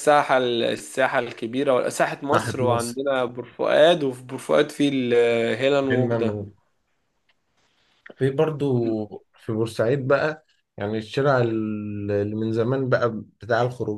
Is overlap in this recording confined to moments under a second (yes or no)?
yes